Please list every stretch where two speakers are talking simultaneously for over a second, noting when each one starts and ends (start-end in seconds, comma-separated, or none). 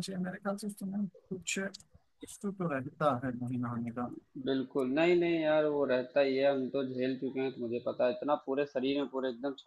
none